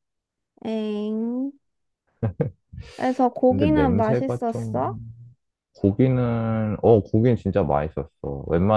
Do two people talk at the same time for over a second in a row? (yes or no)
yes